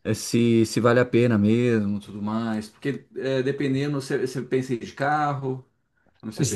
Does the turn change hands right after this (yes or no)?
yes